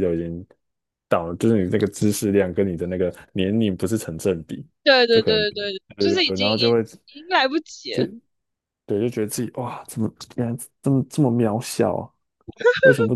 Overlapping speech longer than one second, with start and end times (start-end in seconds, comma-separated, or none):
5.1-6.7